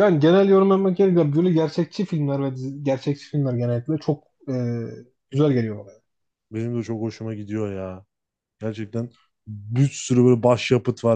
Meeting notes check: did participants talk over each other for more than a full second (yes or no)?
no